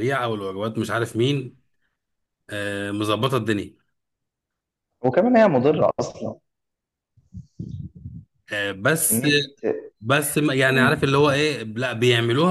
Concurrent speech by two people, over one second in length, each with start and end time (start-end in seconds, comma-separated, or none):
none